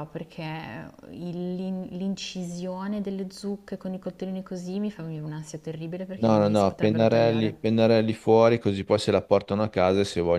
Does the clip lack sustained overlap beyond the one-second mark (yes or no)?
no